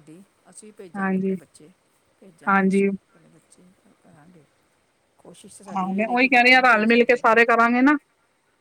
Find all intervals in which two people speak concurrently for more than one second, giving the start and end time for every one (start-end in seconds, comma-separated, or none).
5.8-7.2